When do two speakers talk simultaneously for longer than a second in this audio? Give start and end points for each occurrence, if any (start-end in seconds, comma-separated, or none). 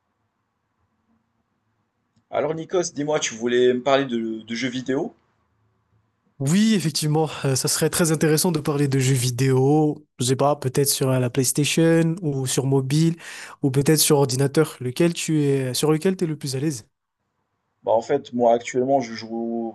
none